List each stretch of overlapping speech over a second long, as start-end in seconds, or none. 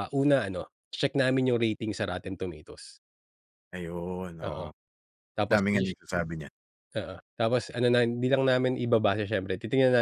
none